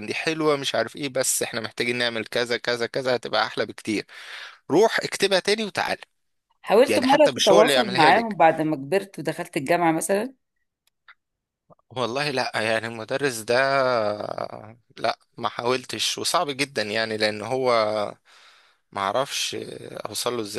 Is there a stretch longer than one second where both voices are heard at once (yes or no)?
yes